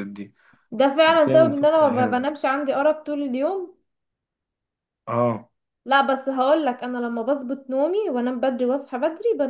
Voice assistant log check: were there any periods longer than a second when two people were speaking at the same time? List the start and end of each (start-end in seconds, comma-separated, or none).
1.0-2.4